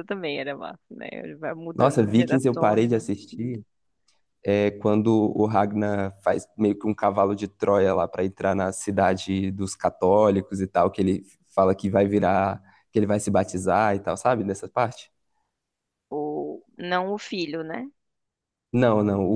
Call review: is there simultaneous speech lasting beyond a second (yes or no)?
yes